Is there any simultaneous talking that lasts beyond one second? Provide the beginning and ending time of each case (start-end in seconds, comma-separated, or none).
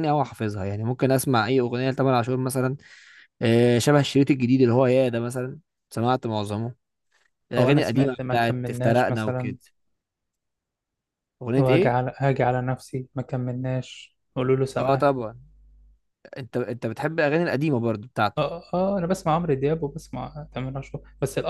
7.6-9.5